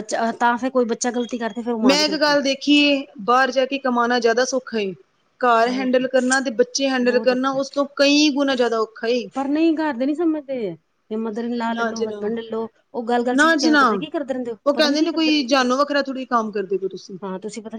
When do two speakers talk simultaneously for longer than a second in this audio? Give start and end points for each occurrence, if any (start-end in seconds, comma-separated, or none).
none